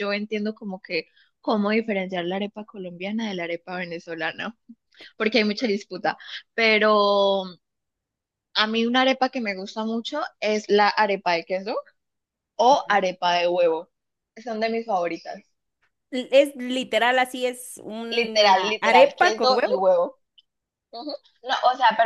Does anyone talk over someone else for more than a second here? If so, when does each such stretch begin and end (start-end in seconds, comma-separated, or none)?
18.1-19.8